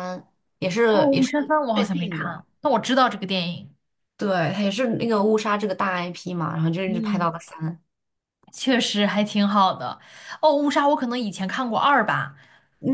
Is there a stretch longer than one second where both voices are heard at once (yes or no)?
yes